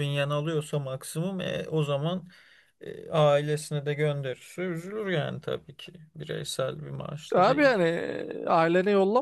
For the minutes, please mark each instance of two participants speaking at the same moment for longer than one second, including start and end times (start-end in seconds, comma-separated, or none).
none